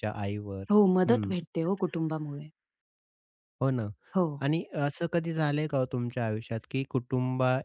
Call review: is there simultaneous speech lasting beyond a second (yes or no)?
no